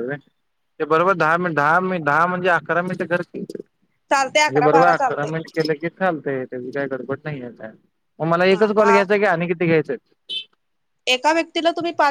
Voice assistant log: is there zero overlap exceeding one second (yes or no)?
no